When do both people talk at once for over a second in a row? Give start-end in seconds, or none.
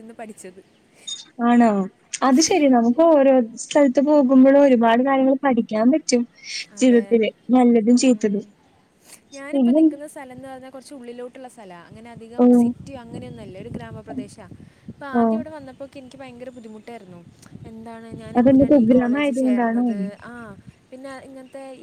18.4-19.8